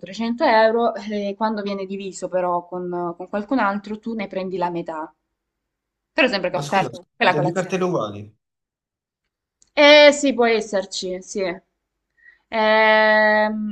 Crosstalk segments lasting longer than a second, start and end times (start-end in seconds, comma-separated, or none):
6.5-7.8